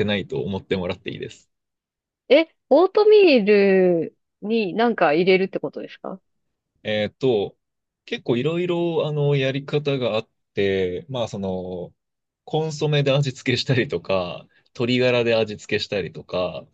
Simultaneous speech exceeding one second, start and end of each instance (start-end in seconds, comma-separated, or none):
none